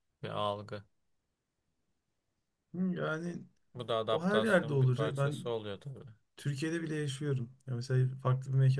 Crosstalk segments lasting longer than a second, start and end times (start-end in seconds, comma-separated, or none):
4.1-5.5